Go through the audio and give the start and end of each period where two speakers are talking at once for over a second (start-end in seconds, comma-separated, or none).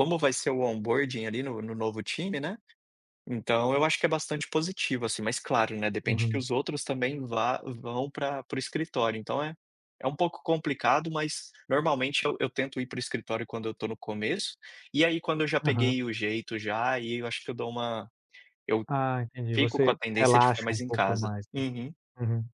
19.5-21.6